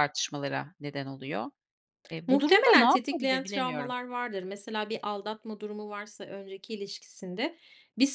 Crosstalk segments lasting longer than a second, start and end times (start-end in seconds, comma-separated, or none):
2.3-4.0